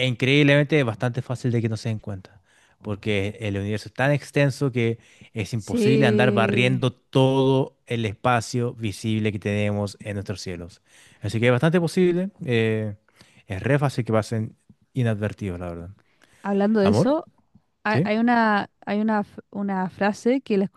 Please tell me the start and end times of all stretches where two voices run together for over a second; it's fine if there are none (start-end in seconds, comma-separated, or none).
5.6-6.8